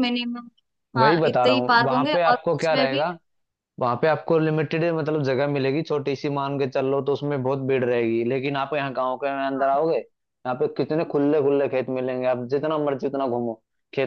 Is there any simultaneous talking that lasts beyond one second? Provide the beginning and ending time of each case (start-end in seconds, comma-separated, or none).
1.0-3.0